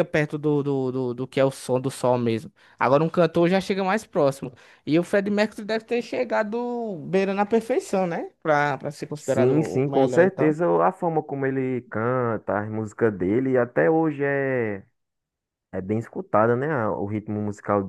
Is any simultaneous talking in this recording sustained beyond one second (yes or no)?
yes